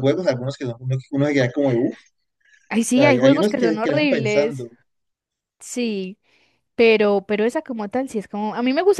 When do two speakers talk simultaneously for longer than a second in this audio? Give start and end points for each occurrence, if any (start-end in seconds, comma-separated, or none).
2.9-4.7